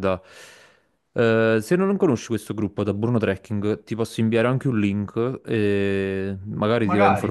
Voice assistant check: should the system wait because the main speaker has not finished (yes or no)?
yes